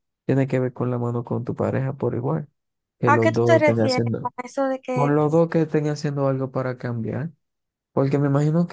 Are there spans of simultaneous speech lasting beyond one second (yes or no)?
yes